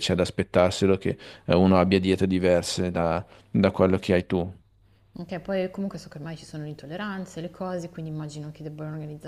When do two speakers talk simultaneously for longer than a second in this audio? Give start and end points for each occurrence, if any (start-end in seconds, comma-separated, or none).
none